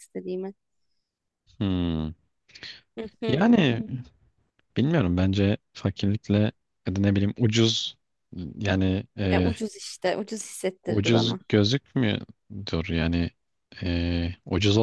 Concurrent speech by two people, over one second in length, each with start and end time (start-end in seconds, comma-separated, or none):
none